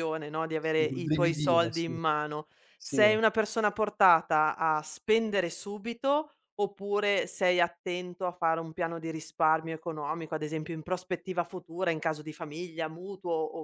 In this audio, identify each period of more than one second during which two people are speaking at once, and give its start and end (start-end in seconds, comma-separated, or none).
0.6-1.9